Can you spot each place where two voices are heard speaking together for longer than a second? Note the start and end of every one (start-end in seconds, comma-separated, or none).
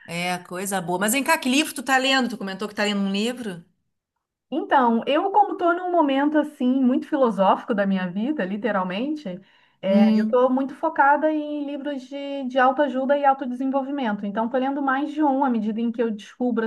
none